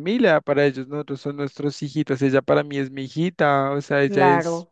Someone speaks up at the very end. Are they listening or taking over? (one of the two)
listening